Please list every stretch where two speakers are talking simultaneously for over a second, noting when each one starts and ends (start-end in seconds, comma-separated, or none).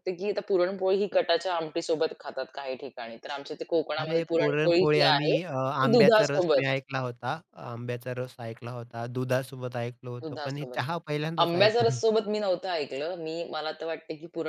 4.0-6.6